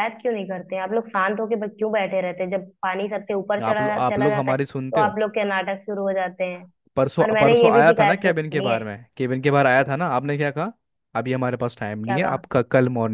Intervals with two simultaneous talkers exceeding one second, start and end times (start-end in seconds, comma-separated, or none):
3.7-5.1, 7.2-8.8